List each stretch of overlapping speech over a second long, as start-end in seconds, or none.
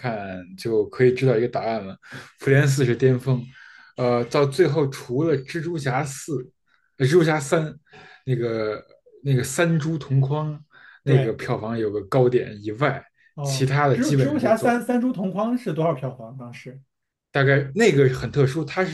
13.4-14.7